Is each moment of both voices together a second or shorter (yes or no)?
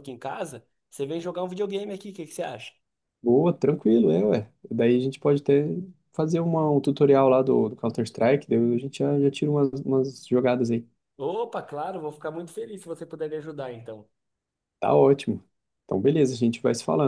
yes